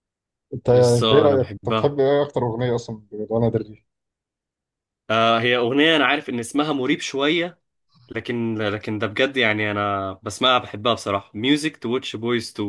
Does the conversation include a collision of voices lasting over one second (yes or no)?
yes